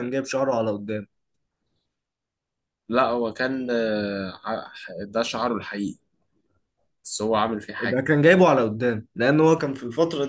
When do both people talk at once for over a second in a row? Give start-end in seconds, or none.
none